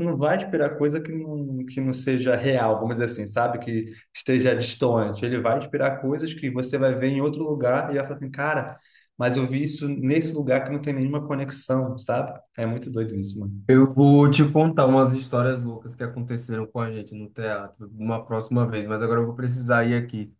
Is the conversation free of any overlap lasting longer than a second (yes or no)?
yes